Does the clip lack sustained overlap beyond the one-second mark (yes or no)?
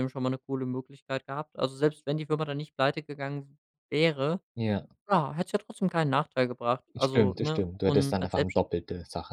no